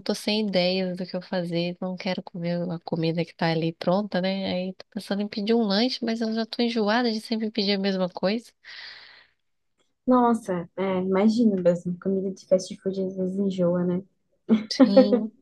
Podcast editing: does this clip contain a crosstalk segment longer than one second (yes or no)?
no